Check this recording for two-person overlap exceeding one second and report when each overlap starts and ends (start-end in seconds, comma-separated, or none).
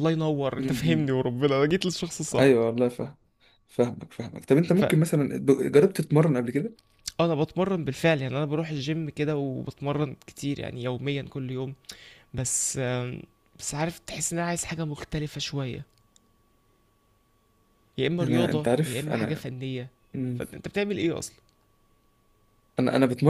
18.2-19.5